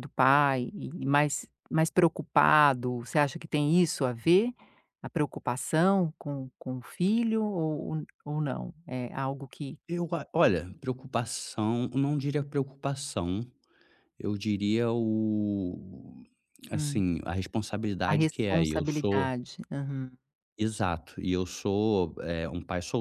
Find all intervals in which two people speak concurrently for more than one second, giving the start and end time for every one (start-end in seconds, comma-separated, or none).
18.0-19.3